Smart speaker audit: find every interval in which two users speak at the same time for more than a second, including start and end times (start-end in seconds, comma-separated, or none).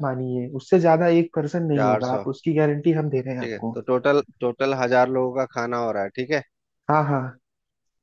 none